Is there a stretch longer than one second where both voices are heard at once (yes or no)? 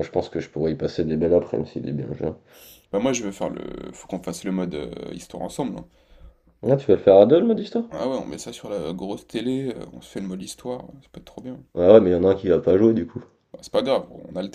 no